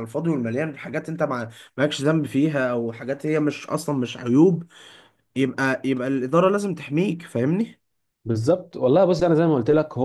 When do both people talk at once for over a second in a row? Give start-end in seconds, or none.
none